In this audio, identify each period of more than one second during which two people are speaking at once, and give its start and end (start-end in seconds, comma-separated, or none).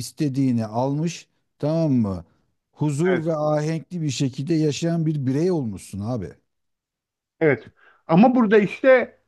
none